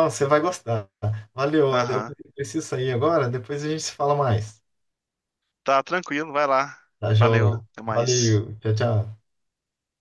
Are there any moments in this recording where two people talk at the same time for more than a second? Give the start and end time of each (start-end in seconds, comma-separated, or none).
7.2-8.4